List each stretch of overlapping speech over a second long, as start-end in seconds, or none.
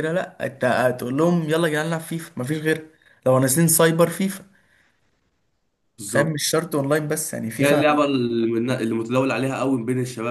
none